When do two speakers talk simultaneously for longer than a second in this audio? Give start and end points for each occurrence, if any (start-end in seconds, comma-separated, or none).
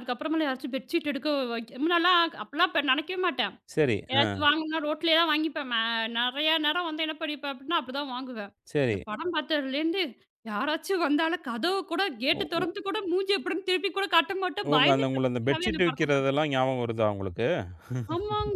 14.7-16.3